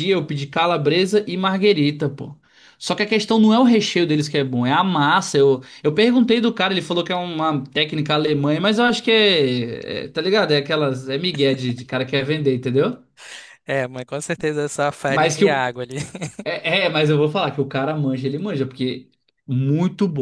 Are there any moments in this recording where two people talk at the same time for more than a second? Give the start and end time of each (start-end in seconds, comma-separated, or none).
none